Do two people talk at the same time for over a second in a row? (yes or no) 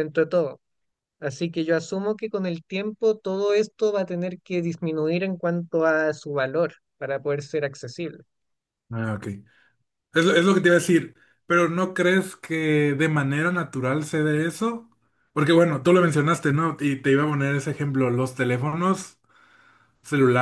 no